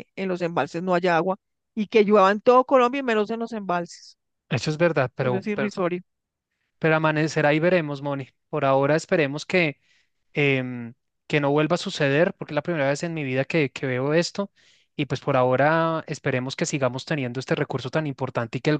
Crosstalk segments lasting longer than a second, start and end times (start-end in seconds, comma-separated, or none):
none